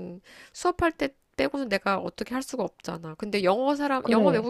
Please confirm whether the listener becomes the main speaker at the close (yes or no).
no